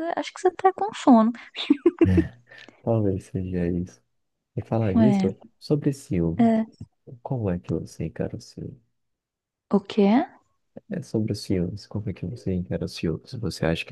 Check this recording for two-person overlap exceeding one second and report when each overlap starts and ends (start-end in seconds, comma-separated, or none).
none